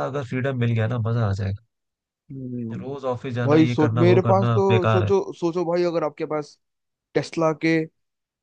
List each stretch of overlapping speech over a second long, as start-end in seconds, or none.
3.5-5.1